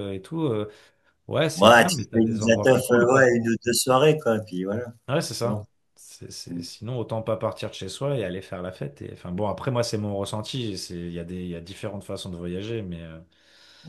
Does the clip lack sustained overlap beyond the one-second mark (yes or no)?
no